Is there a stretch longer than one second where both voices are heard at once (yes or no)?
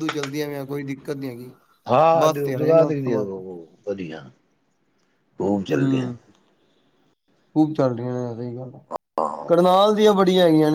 yes